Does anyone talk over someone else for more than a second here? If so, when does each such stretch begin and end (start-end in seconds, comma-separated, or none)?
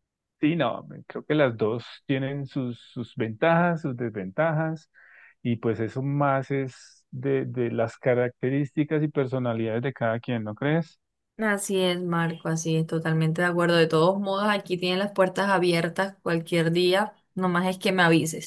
none